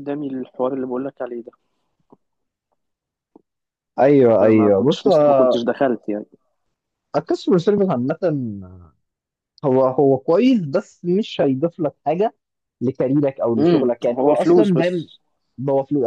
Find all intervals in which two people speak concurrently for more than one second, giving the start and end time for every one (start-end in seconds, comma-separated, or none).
4.4-5.6, 13.6-15.1